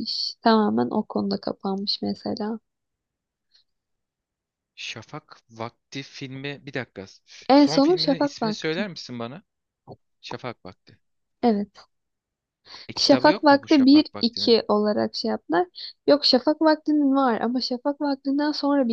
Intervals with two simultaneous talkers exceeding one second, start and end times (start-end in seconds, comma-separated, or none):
7.5-8.9, 13.0-14.6